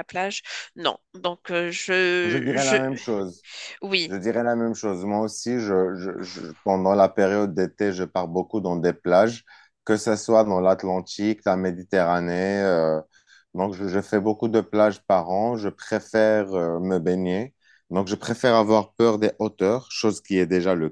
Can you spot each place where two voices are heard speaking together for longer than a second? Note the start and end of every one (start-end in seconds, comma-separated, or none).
none